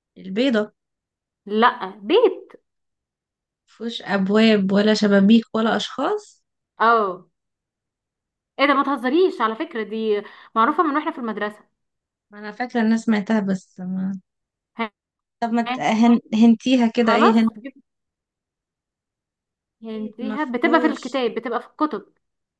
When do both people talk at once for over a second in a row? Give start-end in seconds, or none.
19.9-21.2